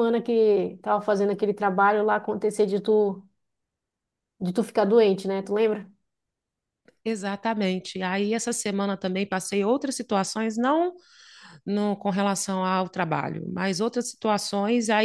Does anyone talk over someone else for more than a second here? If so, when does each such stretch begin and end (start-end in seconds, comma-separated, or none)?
none